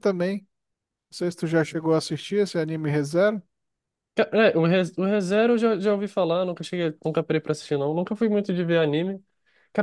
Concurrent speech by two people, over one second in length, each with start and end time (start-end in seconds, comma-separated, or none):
none